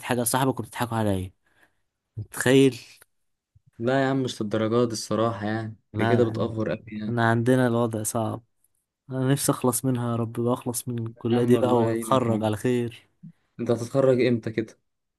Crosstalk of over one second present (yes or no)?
yes